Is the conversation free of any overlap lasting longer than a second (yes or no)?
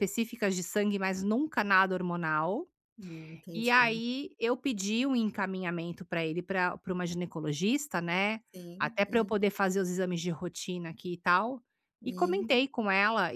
yes